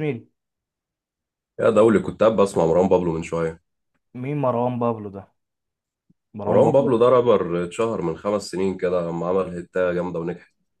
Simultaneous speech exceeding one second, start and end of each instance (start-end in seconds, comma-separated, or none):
none